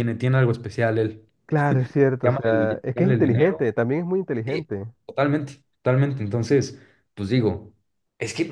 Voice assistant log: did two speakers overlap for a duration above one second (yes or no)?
yes